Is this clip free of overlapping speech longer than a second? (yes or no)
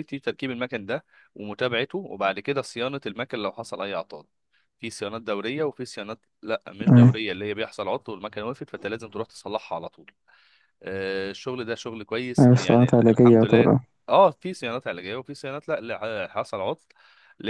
no